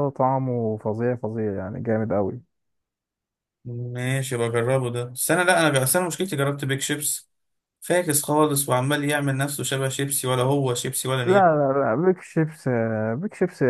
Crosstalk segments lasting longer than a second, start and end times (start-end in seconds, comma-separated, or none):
none